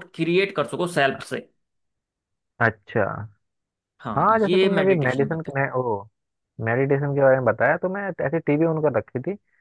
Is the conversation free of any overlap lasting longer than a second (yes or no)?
no